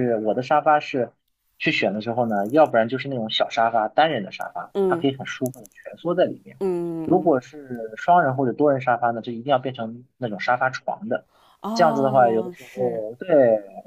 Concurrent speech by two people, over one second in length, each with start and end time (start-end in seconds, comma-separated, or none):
11.7-13.0